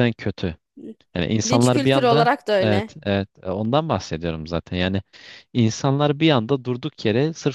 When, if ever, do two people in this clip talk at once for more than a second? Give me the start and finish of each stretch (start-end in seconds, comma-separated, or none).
1.4-3.0